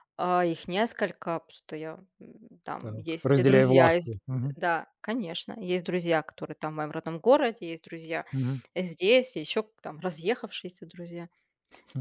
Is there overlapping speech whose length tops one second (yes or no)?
yes